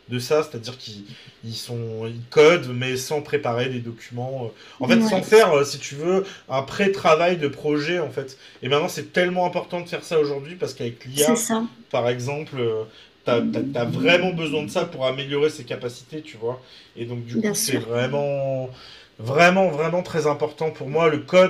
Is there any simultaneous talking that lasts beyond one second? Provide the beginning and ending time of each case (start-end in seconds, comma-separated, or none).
13.2-14.6